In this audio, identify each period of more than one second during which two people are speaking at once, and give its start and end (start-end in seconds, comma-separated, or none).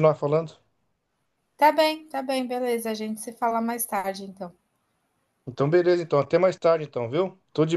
none